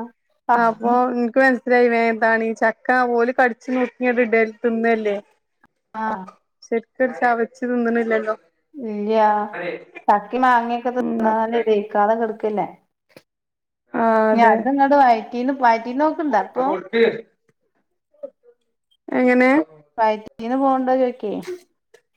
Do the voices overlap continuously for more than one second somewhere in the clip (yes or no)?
no